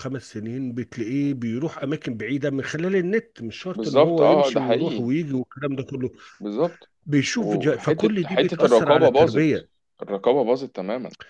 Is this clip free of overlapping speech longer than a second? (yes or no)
no